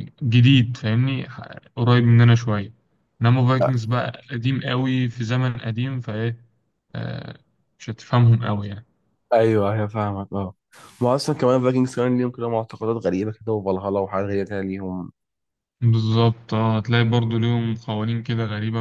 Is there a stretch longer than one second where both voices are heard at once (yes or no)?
no